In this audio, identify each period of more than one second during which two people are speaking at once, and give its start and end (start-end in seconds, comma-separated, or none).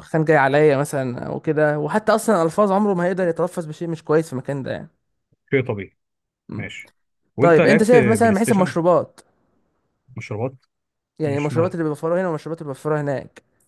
7.4-8.8